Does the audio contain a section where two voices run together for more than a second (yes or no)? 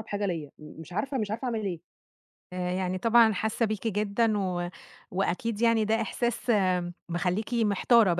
no